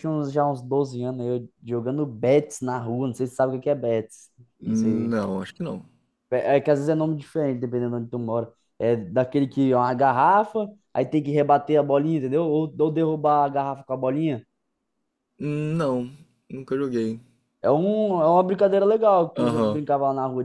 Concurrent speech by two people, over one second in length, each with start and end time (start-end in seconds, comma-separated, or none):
none